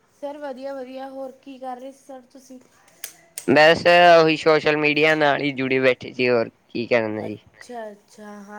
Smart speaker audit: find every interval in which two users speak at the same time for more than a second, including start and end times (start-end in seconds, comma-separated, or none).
none